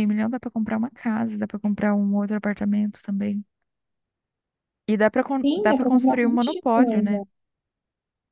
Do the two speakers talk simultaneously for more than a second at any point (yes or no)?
yes